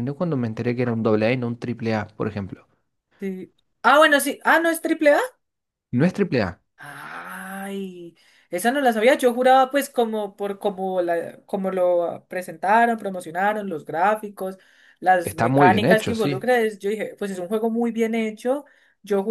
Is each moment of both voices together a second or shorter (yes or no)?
no